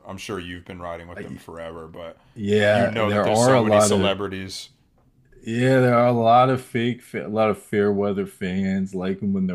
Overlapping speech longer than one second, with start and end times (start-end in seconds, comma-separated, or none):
2.7-4.1